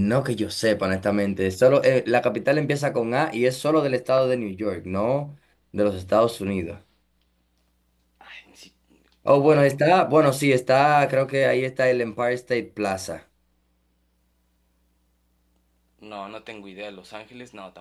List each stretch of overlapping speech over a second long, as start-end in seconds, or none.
none